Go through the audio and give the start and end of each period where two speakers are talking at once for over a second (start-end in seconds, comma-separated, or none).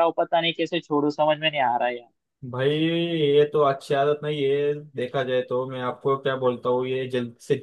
none